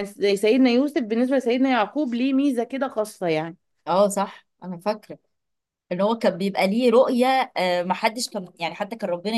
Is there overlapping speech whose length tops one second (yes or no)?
no